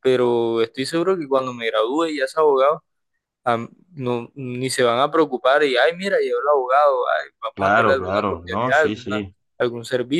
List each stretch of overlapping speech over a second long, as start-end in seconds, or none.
7.5-9.2